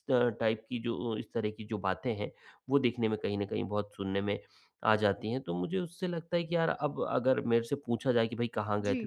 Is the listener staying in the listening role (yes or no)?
yes